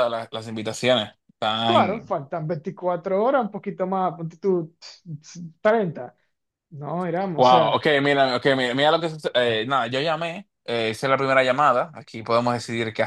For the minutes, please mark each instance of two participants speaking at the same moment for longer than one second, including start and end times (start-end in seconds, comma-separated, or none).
none